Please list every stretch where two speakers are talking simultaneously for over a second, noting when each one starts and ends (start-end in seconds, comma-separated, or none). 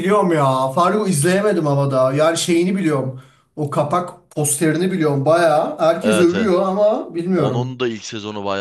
none